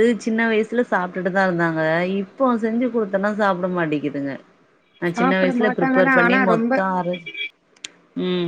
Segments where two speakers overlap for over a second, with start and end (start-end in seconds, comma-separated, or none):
5.1-6.7